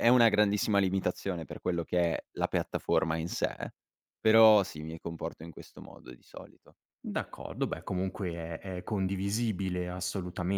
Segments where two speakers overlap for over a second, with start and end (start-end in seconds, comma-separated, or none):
none